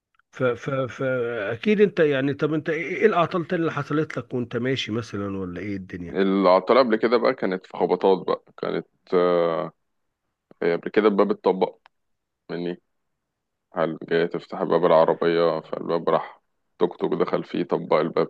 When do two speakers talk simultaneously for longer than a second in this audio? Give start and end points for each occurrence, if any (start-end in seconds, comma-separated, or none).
none